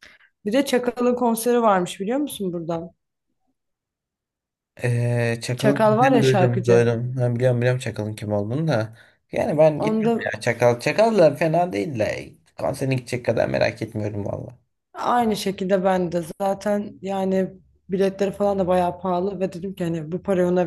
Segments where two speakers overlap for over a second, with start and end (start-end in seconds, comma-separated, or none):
5.6-6.9